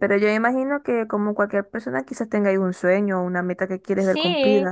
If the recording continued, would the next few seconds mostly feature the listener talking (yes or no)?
yes